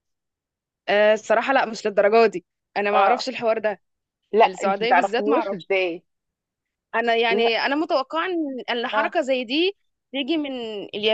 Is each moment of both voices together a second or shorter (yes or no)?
no